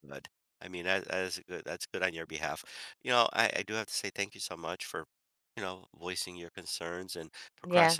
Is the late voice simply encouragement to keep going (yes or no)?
yes